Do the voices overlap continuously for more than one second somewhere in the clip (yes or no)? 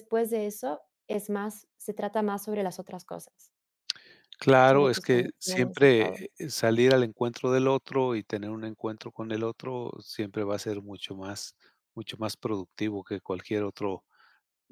yes